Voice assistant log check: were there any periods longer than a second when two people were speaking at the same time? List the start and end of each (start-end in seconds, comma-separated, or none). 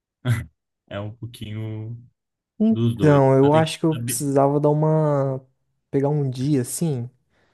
2.7-4.2